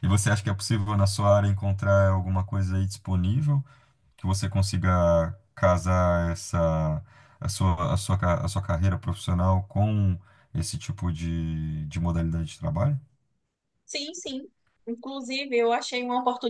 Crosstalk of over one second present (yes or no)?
no